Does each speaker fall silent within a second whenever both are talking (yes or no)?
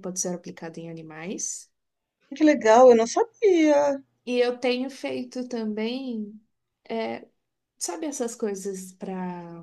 yes